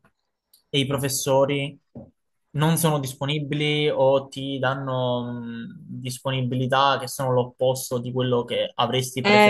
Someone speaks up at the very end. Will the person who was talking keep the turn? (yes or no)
no